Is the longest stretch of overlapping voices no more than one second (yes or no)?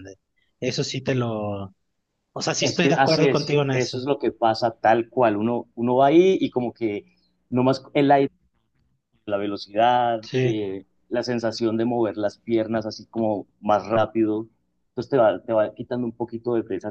no